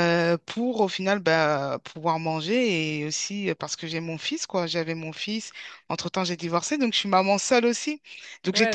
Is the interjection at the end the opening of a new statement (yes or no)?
yes